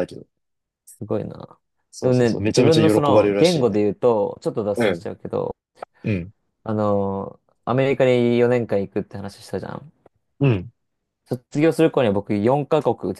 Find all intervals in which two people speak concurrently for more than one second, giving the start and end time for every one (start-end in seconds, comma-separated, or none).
2.0-3.8